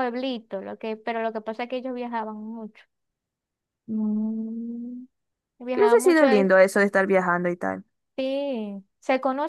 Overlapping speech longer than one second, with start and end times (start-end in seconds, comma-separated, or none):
none